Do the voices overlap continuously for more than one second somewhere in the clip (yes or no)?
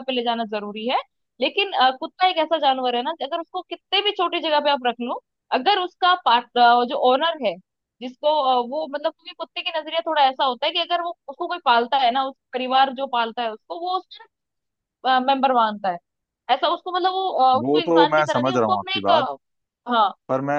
yes